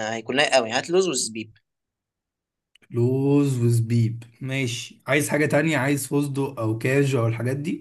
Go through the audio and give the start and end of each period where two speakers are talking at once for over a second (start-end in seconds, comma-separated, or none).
none